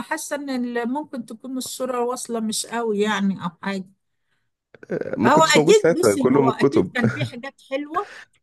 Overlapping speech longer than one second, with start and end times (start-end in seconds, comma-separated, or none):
5.2-6.9